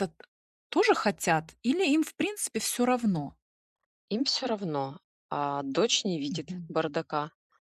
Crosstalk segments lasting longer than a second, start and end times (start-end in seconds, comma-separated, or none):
none